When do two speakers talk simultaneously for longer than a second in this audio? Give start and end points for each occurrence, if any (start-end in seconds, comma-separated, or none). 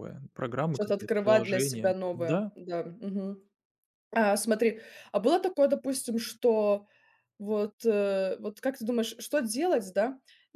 0.7-2.5